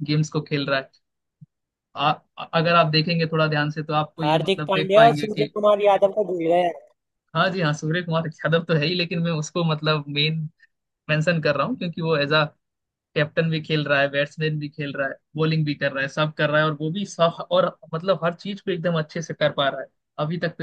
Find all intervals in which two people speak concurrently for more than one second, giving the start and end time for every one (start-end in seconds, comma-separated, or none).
4.2-5.5